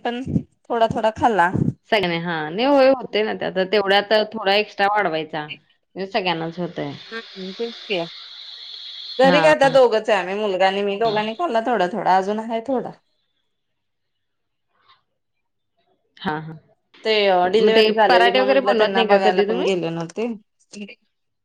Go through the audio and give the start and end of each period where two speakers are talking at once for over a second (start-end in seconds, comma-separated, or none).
17.5-19.7